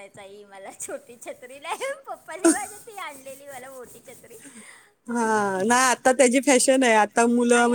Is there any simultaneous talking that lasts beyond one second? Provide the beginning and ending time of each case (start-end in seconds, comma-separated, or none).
none